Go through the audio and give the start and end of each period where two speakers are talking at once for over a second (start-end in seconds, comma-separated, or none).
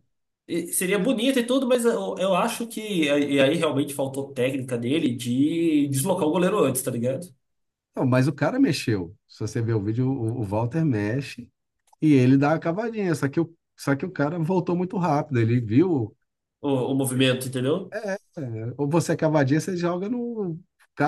none